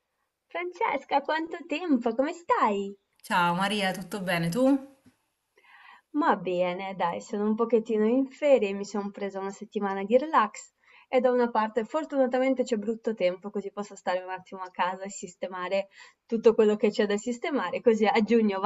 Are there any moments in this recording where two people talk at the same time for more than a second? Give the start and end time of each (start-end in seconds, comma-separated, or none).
none